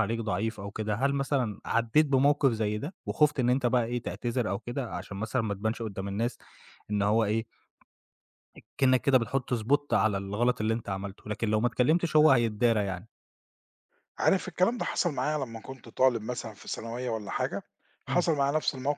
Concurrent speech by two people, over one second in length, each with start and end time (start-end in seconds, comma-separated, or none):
none